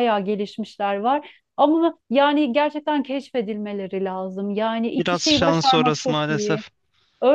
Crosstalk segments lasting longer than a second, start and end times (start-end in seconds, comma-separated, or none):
5.0-6.6